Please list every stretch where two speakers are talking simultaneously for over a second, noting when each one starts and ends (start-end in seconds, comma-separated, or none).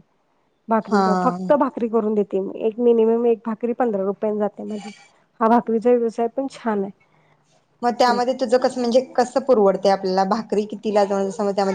none